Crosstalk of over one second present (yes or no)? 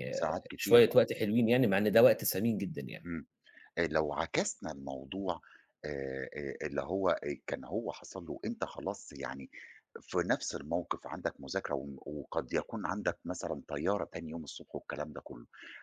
no